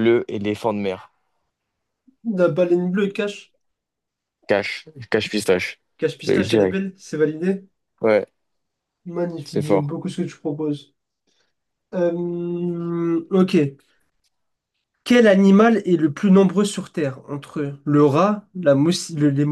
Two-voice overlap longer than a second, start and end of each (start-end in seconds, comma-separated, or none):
none